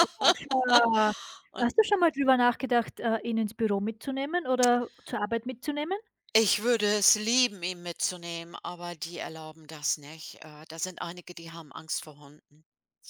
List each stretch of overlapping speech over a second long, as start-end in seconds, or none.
none